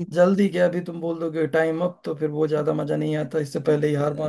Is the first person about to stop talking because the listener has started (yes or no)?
yes